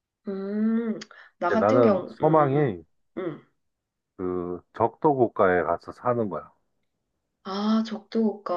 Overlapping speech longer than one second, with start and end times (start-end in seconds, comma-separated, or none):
1.5-2.8